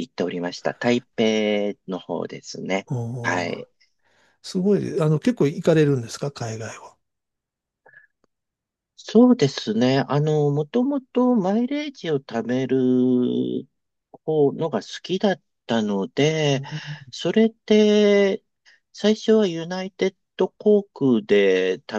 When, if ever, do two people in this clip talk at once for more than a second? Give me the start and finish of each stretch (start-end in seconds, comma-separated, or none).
none